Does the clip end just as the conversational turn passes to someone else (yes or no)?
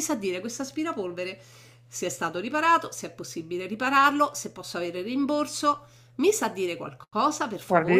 yes